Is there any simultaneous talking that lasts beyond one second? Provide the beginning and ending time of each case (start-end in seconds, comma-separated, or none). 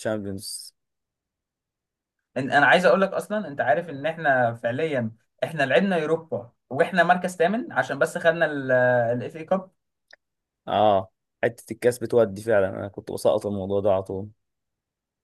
none